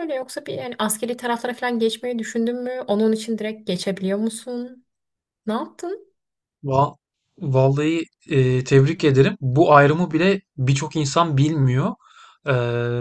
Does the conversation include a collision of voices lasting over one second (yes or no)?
no